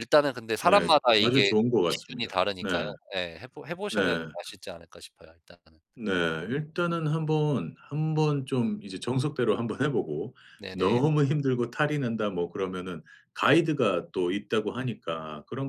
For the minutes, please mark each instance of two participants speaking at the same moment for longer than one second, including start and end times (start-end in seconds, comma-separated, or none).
0.6-2.7